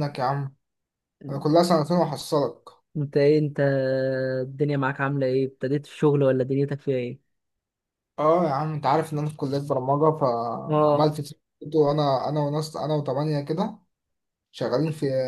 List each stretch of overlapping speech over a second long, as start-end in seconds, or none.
none